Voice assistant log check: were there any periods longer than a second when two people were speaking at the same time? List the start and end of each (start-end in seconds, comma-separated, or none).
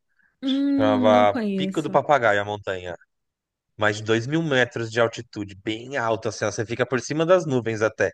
0.8-2.0